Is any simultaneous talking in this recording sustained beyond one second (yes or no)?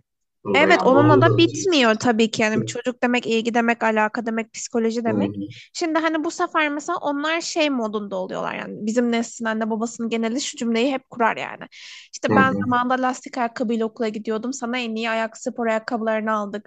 yes